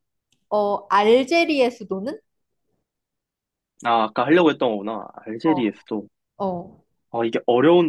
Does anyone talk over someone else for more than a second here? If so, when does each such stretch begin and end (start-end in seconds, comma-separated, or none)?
none